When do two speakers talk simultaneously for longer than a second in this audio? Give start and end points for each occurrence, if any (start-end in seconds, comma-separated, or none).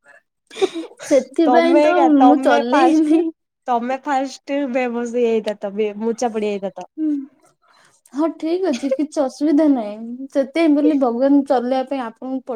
1.5-3.2